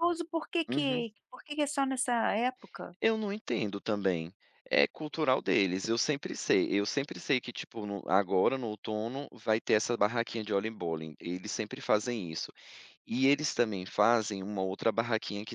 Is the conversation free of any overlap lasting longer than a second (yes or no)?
yes